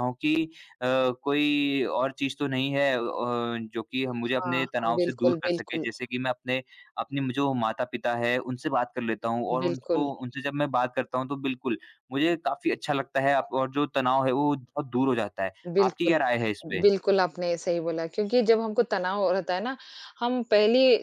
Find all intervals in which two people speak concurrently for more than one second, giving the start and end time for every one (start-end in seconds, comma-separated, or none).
4.3-5.9